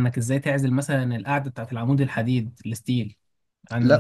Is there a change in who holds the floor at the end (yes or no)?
yes